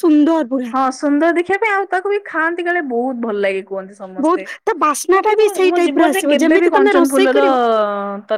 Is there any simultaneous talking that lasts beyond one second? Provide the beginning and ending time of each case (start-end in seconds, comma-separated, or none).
5.2-7.4